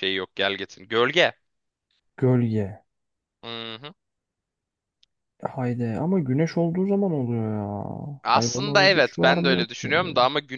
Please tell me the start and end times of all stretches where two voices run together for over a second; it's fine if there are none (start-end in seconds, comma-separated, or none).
8.3-9.9